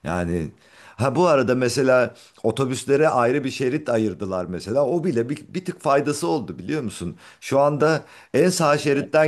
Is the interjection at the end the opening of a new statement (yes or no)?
no